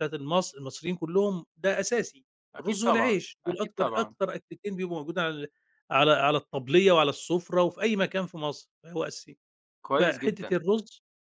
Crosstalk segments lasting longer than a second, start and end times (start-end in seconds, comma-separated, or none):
2.5-4.2